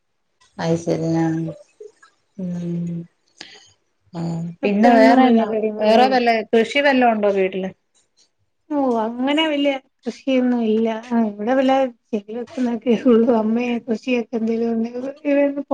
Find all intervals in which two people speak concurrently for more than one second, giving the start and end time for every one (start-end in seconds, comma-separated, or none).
4.7-6.3